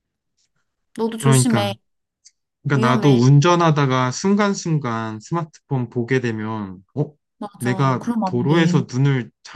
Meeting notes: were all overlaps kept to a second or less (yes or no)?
no